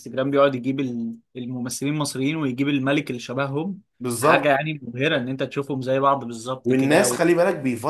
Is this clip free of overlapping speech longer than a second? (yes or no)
yes